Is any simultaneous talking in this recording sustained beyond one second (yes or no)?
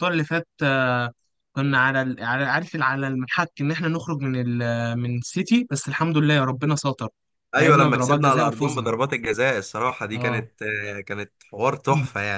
yes